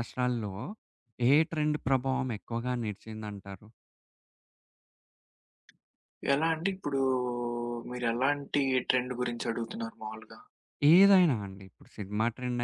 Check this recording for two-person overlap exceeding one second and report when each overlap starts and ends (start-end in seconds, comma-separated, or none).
none